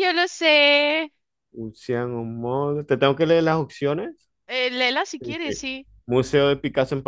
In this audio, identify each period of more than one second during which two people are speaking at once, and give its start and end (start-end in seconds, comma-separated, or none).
none